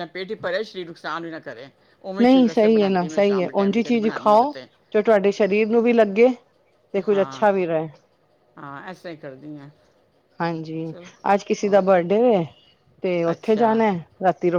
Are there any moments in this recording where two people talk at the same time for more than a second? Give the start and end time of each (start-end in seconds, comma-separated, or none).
2.2-4.5